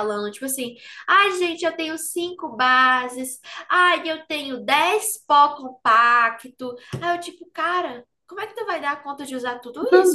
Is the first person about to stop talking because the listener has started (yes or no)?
yes